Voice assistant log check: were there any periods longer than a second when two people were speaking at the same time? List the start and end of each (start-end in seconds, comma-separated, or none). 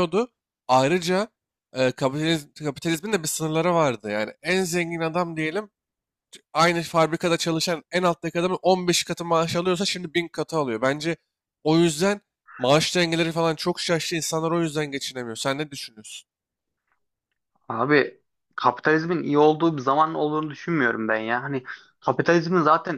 none